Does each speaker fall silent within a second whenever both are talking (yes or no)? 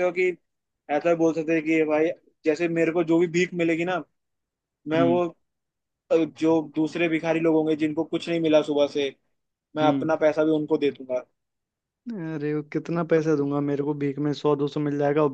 yes